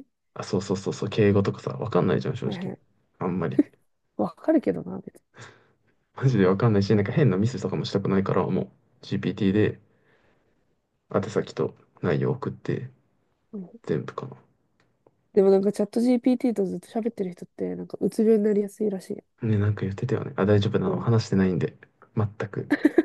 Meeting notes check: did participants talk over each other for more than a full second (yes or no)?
no